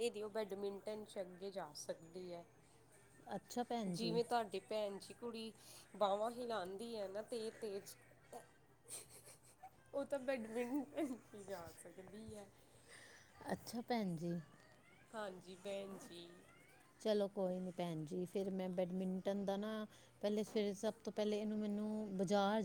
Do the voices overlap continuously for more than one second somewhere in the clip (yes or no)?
no